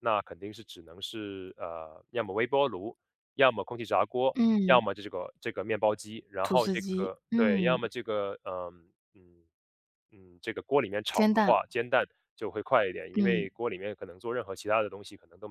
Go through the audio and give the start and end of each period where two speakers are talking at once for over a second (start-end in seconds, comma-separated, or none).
6.4-7.8